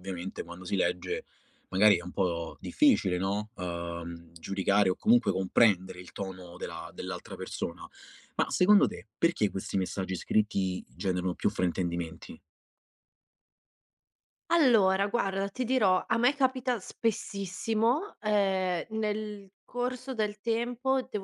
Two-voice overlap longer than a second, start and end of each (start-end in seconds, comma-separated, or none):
none